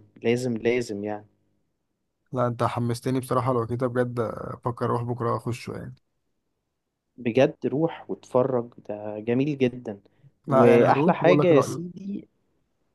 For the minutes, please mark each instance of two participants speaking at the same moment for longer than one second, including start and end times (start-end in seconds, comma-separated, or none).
10.5-11.8